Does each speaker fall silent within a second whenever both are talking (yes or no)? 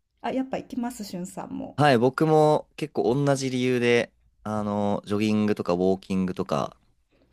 yes